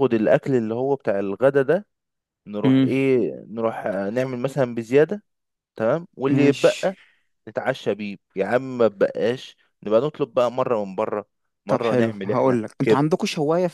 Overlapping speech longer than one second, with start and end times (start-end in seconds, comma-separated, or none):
11.7-13.1